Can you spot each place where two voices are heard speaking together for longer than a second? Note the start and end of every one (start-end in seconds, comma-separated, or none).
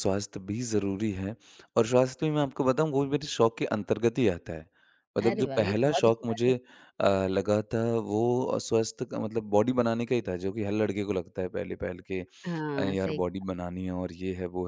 5.2-6.5